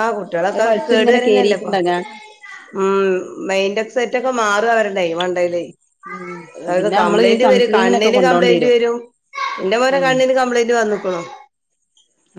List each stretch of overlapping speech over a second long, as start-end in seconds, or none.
6.8-8.6